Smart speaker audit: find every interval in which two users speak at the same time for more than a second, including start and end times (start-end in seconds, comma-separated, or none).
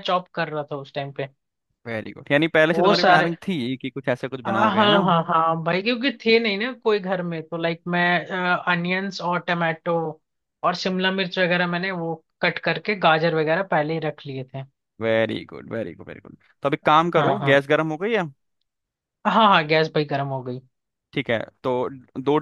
none